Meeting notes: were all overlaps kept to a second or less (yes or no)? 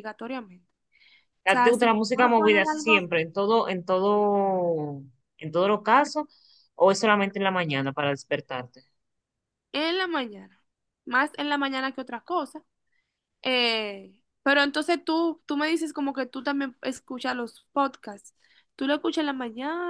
no